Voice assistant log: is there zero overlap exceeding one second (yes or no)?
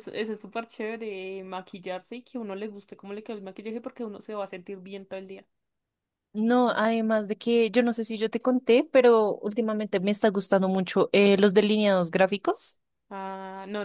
yes